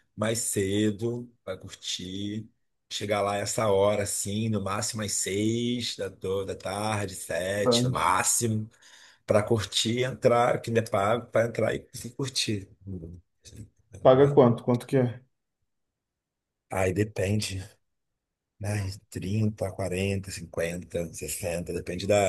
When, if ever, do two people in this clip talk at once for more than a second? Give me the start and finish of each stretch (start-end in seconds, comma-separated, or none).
none